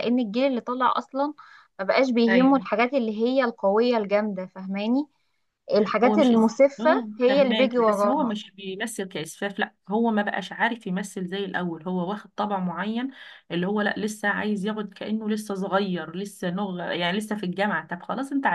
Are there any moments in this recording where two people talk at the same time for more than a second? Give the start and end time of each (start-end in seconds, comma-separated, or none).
6.1-8.4